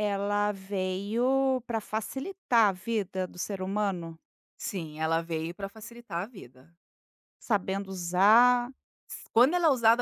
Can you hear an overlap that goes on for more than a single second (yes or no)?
no